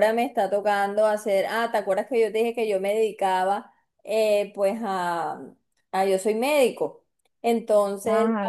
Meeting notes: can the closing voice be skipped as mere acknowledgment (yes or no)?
yes